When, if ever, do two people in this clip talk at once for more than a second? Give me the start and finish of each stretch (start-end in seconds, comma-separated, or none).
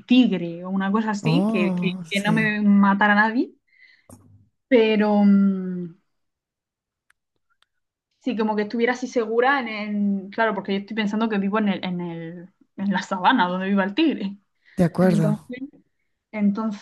1.2-2.5